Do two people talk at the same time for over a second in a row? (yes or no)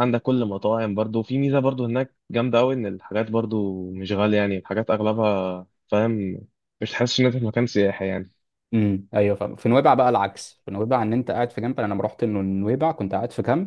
no